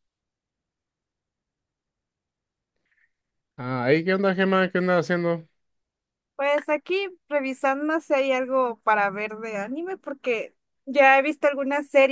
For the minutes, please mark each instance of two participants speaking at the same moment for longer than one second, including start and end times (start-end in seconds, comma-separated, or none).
none